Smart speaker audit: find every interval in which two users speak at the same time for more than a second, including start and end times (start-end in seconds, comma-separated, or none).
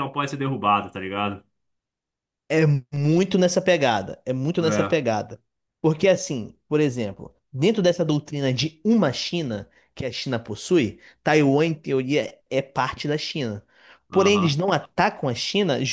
none